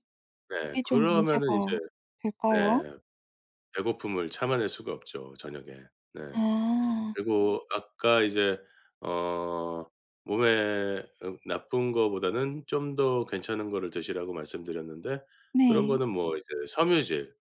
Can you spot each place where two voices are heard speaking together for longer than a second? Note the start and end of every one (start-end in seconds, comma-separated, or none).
0.5-1.8